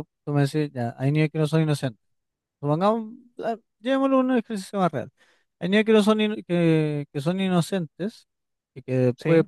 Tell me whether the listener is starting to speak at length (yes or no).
no